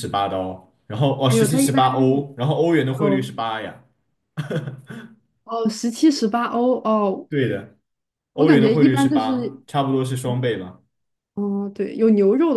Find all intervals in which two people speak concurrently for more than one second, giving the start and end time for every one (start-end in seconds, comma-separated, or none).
8.4-9.6